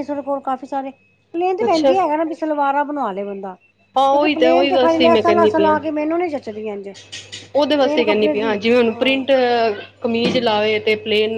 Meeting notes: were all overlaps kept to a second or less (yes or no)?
no